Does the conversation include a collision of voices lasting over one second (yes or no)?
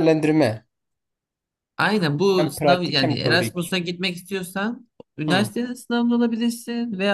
yes